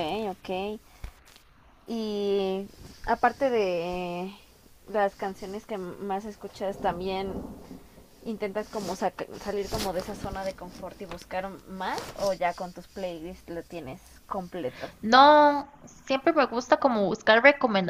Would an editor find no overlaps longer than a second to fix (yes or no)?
yes